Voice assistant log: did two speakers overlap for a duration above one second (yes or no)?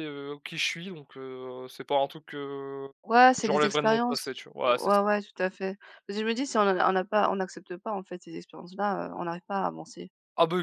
yes